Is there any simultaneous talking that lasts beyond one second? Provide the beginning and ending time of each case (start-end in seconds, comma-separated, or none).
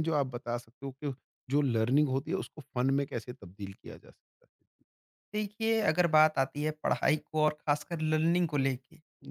none